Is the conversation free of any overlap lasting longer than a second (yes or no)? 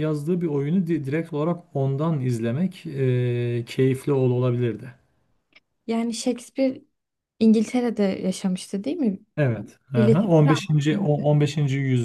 no